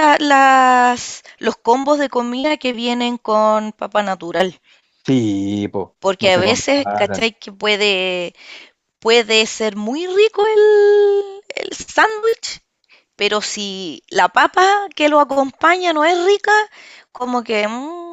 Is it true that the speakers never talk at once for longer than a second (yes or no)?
no